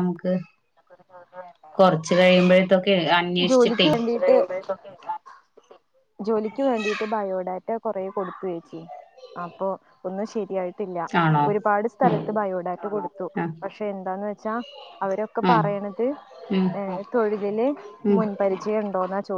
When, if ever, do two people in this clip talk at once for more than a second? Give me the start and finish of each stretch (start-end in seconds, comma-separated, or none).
none